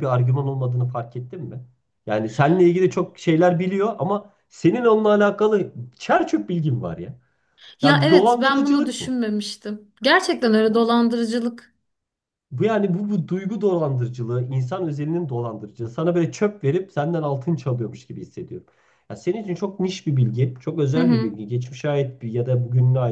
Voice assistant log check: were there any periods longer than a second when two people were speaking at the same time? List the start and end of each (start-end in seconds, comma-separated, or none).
7.8-9.2